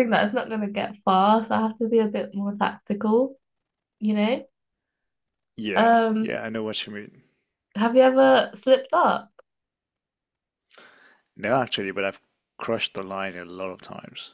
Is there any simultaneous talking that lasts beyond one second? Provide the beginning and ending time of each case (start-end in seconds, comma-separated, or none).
none